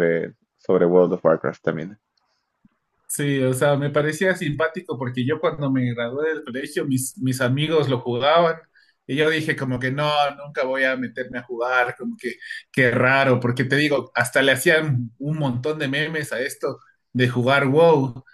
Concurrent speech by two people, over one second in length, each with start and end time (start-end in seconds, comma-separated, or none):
none